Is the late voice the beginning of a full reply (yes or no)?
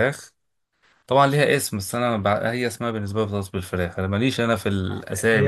yes